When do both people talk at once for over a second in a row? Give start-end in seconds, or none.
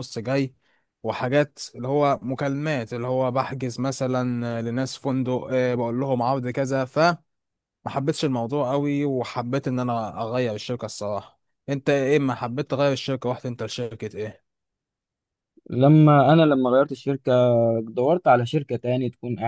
none